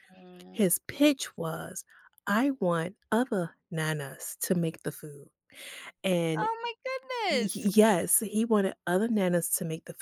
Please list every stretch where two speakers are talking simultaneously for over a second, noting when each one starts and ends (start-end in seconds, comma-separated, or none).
none